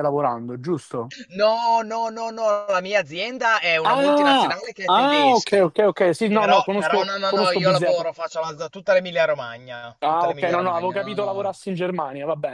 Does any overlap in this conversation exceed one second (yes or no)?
yes